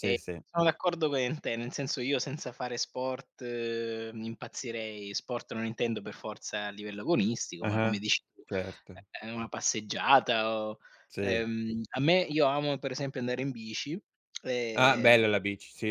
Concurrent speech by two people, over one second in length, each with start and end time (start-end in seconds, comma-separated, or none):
none